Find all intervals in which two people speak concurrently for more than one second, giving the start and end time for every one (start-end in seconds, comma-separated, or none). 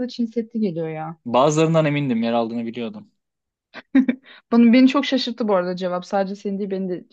none